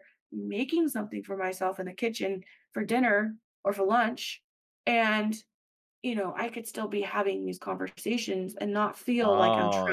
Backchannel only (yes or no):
no